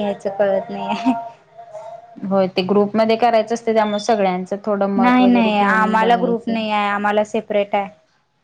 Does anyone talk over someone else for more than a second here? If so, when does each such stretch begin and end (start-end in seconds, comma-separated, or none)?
5.0-6.5